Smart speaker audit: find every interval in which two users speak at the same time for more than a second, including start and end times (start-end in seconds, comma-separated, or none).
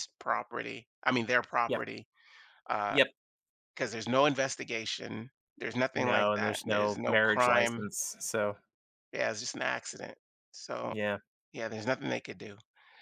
5.9-7.9